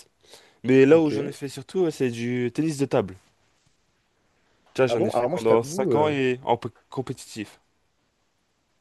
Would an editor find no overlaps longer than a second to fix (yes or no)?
no